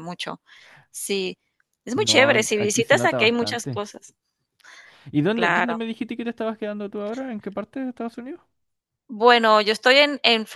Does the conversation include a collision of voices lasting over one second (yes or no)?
yes